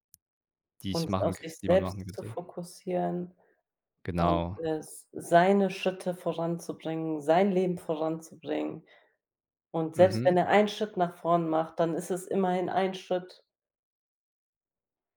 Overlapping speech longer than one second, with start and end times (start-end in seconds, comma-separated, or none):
0.9-2.3